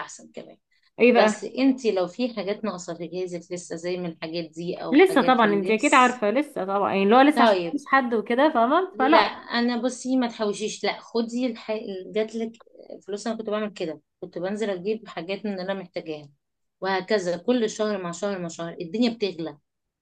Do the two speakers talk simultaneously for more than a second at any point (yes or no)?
yes